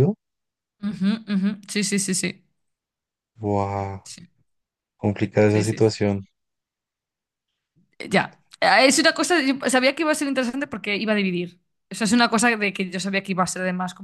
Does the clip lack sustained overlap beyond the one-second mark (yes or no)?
yes